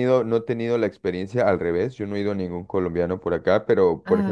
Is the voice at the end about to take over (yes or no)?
no